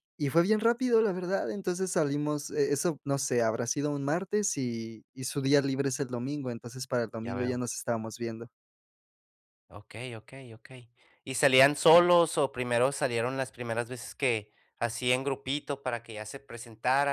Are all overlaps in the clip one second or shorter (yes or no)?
yes